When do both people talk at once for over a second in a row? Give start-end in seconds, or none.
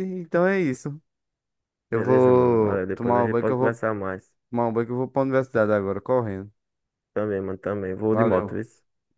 1.9-3.8